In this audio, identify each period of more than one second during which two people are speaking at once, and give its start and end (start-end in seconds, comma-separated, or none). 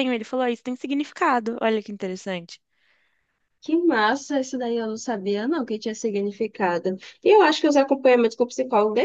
none